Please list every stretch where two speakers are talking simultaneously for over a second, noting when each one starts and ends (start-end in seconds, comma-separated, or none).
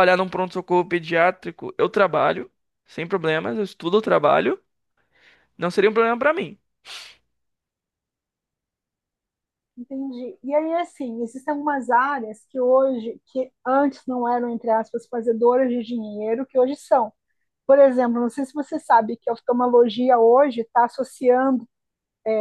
none